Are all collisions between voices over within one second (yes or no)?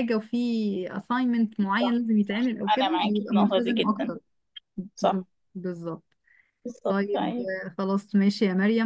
no